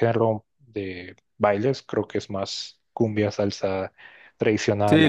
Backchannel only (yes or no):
no